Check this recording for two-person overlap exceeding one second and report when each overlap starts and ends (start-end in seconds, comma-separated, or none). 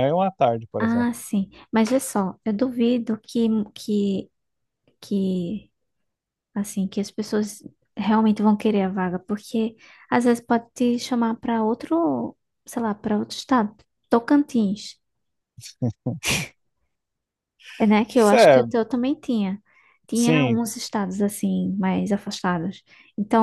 none